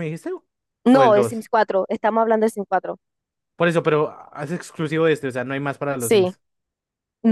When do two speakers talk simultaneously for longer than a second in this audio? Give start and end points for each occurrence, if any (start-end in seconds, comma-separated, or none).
none